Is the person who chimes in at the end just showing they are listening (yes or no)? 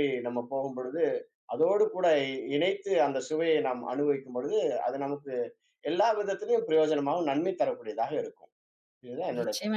no